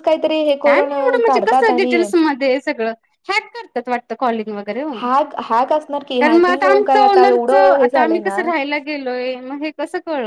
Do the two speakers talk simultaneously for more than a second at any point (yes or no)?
no